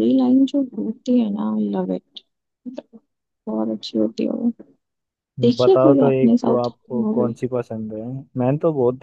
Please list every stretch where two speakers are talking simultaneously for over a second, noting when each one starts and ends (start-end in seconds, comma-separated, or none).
5.6-7.3